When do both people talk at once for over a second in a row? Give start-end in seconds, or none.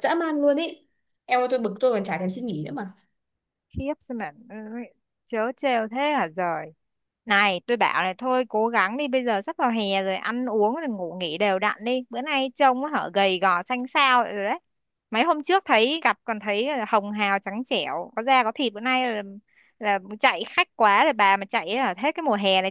none